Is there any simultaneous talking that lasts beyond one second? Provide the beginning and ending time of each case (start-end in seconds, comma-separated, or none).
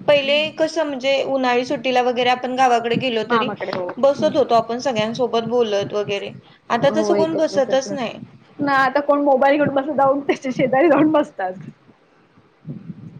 6.8-8.2